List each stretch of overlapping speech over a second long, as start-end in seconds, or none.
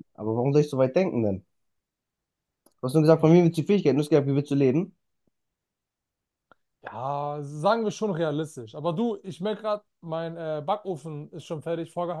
none